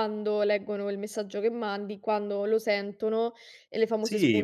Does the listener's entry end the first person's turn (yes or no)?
yes